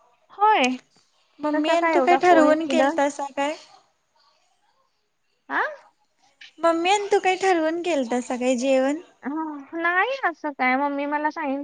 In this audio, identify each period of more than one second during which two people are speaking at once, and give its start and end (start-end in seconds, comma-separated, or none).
1.5-3.2